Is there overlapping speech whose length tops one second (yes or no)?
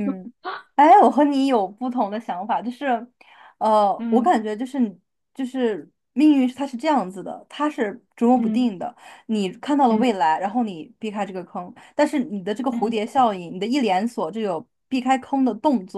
no